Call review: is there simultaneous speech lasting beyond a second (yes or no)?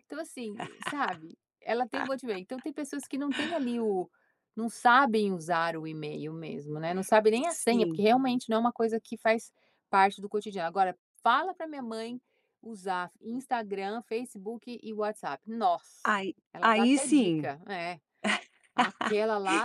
yes